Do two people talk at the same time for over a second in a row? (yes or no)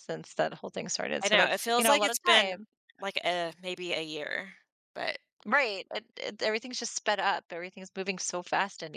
yes